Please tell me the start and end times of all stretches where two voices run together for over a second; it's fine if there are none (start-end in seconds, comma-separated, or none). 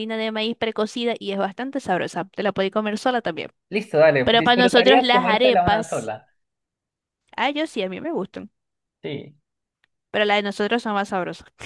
4.2-6.1